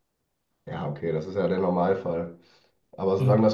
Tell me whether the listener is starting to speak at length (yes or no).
no